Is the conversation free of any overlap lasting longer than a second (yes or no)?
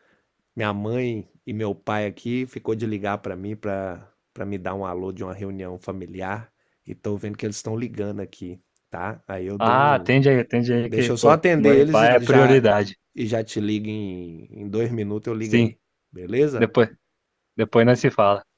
no